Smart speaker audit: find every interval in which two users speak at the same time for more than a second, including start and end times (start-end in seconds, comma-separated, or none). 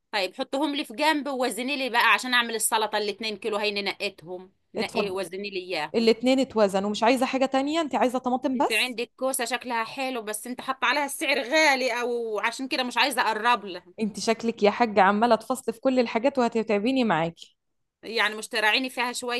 none